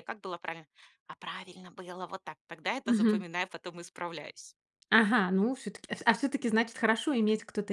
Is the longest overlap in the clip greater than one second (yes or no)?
no